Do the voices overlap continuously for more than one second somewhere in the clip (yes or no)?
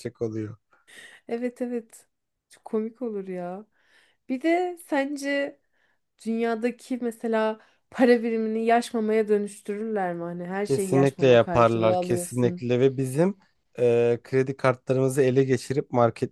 yes